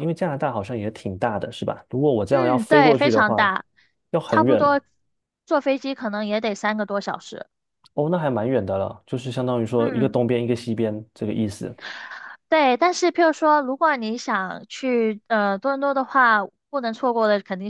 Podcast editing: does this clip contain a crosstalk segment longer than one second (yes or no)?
yes